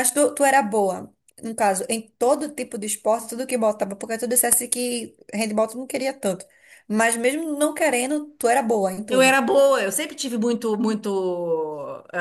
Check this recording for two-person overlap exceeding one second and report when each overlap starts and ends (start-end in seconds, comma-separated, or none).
none